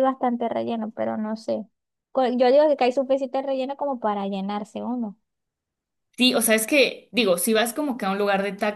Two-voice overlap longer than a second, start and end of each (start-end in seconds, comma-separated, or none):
none